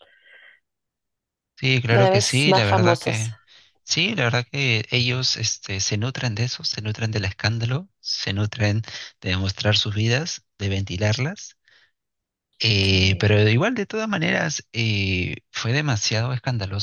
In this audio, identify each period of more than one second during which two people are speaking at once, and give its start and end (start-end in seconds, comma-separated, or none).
1.9-3.3